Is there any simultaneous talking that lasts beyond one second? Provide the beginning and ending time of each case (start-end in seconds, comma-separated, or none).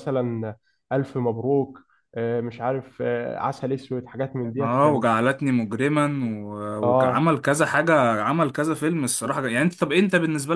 none